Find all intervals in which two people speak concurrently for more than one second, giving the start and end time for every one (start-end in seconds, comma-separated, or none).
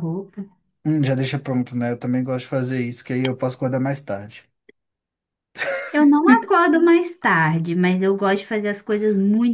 none